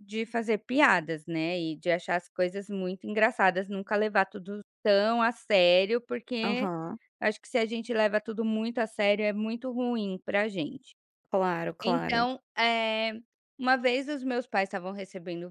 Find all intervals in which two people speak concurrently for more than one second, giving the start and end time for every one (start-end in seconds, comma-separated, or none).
none